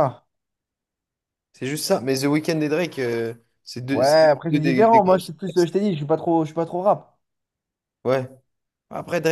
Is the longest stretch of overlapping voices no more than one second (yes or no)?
no